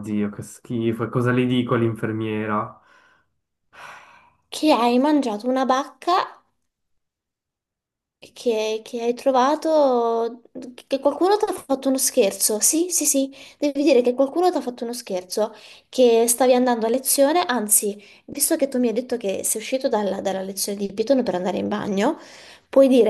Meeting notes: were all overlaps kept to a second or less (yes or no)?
yes